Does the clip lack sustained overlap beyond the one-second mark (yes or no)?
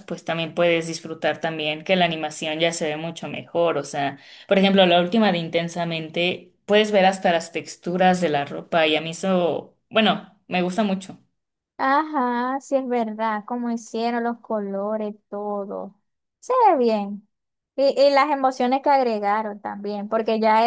yes